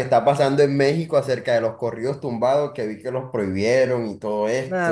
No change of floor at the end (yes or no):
no